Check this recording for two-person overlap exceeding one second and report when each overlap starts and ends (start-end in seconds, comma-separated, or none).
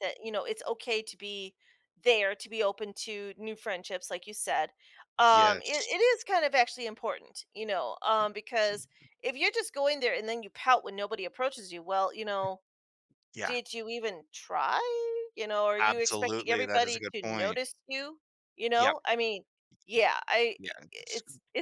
15.8-17.6